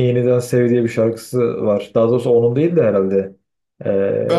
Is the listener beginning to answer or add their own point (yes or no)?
yes